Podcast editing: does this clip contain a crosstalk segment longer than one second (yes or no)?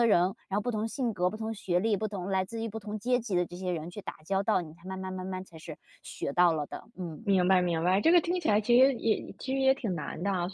no